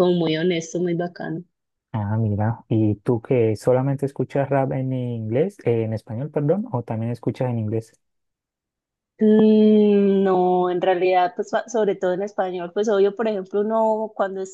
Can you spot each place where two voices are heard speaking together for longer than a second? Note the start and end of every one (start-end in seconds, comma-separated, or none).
none